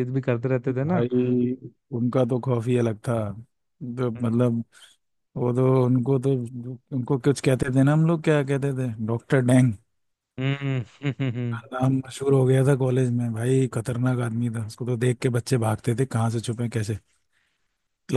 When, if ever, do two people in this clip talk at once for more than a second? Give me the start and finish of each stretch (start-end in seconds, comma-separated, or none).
none